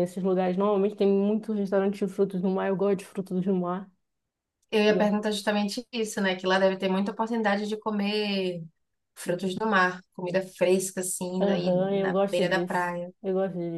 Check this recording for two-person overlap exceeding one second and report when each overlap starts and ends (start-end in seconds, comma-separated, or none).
11.4-13.1